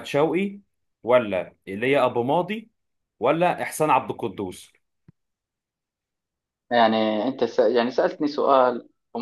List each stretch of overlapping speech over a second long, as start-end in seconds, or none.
none